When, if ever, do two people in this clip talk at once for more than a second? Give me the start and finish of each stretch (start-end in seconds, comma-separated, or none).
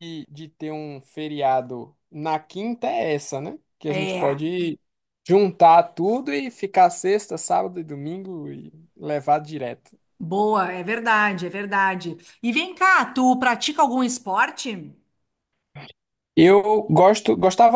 none